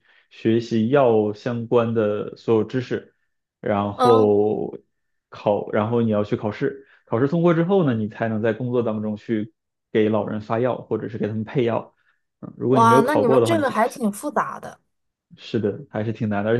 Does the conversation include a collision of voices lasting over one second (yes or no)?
yes